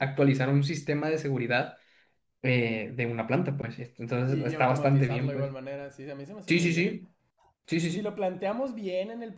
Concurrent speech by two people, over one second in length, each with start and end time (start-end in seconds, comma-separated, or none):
4.2-5.5